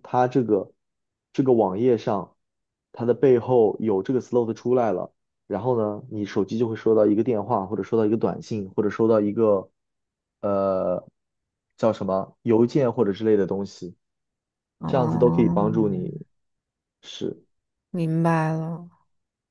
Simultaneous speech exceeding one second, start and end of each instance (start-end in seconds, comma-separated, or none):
14.8-16.1